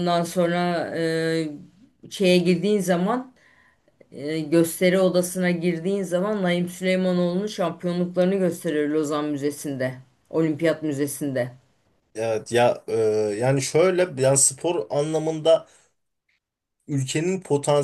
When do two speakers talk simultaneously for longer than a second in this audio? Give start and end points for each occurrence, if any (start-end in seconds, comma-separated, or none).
none